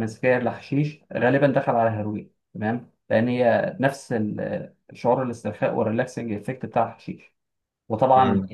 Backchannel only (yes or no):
yes